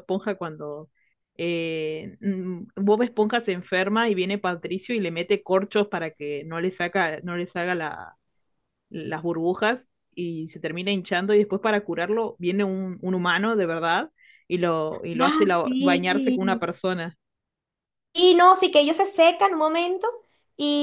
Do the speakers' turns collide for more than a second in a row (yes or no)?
yes